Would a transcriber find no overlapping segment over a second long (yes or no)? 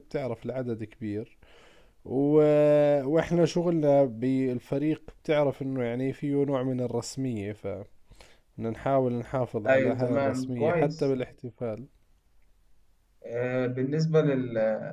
no